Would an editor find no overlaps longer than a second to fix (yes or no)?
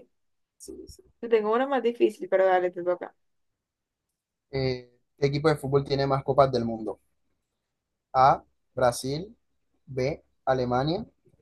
yes